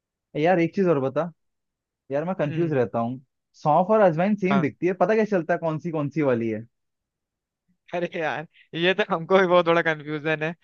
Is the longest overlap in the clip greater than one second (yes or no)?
no